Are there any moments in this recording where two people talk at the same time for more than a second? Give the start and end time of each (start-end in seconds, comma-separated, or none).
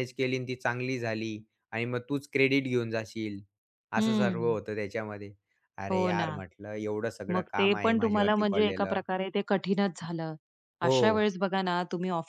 7.3-9.0